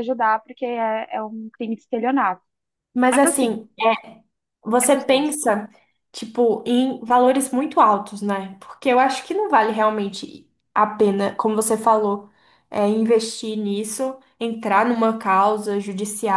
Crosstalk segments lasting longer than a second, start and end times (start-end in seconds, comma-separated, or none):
none